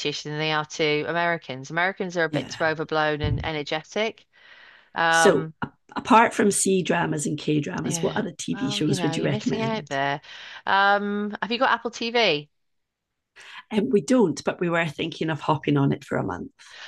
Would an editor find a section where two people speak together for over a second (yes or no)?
yes